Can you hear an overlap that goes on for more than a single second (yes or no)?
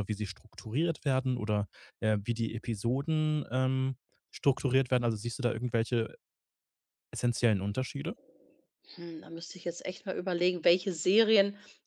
no